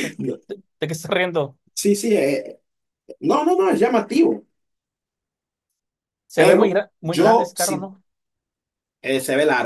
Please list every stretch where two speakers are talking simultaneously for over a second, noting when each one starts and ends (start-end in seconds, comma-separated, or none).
6.3-7.9